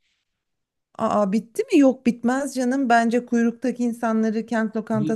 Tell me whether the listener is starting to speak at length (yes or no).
no